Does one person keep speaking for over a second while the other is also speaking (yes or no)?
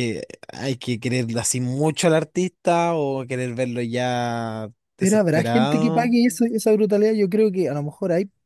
yes